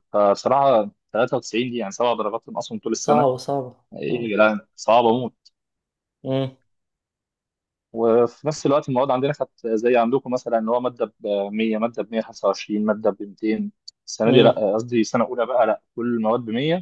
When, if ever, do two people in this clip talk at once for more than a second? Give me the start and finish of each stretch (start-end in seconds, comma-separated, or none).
none